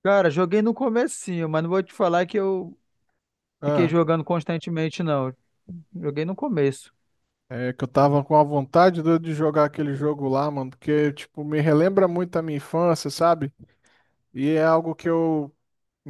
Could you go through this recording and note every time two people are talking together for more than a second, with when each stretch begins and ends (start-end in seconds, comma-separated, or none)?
none